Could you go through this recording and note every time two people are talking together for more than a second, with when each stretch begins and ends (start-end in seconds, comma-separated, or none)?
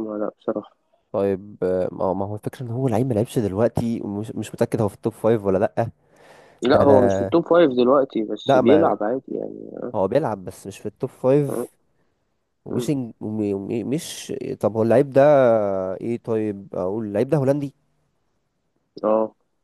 none